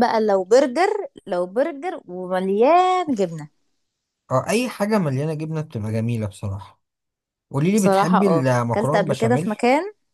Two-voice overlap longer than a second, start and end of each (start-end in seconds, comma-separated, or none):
7.7-9.6